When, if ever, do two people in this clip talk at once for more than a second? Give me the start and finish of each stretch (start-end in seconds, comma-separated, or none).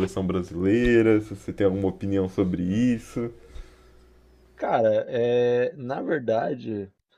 none